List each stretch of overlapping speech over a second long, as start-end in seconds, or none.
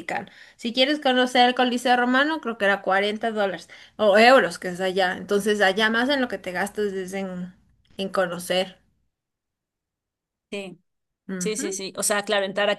none